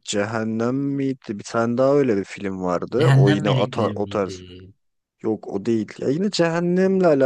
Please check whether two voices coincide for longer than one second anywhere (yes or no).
yes